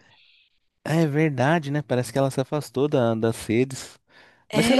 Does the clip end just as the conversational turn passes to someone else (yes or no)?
yes